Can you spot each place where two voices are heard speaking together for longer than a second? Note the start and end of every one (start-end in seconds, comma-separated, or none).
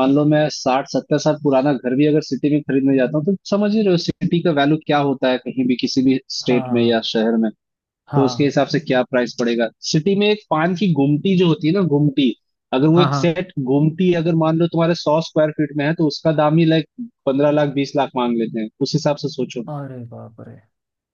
none